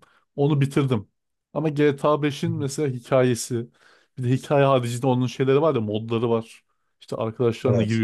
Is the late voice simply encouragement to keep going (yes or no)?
yes